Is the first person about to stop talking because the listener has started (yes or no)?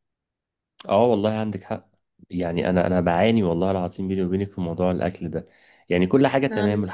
no